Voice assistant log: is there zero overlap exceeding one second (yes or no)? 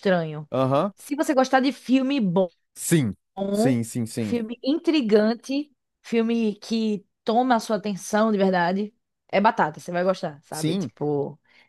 yes